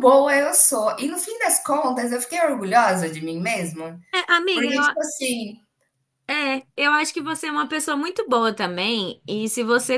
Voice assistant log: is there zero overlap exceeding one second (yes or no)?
yes